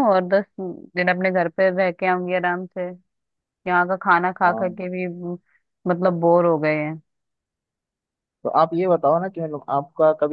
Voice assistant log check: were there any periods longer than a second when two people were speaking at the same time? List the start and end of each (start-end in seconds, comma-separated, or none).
none